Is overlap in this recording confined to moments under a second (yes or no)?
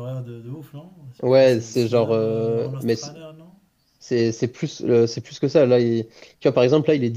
no